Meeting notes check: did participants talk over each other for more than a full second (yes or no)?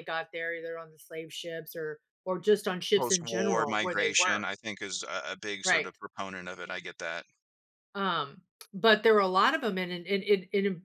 yes